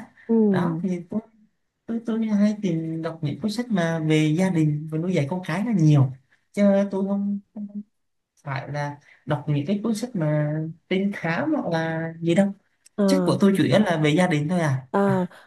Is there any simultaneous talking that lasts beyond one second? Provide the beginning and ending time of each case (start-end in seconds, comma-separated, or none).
none